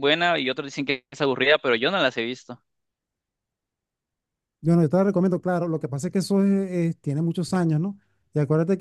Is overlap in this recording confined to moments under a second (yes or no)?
yes